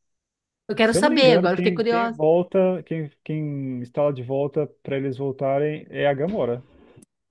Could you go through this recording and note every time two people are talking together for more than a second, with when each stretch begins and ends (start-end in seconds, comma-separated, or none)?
0.8-2.2